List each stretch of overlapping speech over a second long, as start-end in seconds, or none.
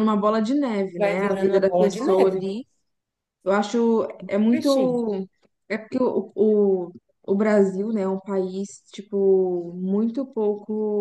1.0-2.5